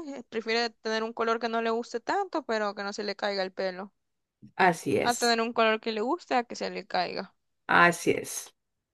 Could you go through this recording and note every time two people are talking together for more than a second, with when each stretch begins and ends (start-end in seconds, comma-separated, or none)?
none